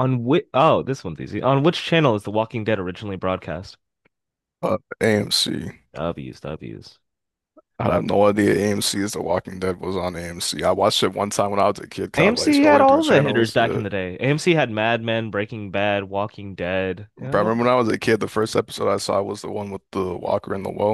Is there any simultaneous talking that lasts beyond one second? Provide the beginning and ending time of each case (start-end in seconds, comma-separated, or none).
12.2-13.8